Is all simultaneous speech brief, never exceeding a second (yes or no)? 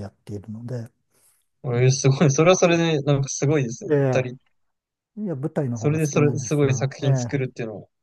no